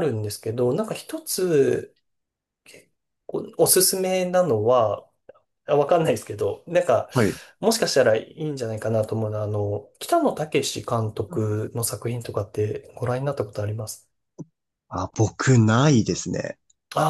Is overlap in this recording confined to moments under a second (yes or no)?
yes